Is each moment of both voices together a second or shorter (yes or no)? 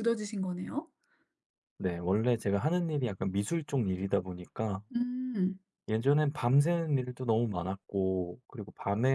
yes